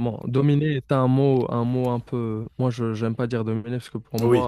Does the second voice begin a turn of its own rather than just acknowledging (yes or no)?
no